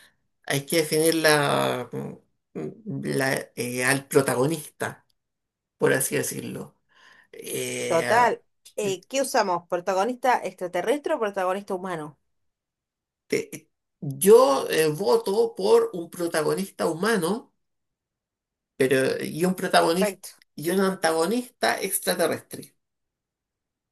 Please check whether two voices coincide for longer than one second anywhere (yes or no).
no